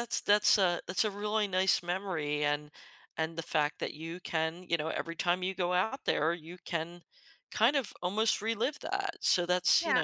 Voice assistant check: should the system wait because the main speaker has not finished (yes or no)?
no